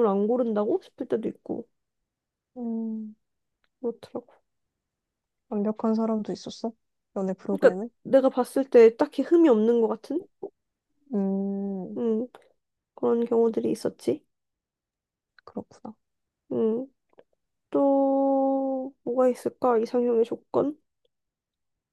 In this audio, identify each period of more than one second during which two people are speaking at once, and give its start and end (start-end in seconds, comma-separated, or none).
none